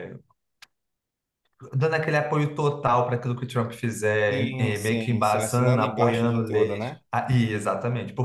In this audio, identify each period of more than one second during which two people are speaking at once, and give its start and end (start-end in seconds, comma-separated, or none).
4.3-7.0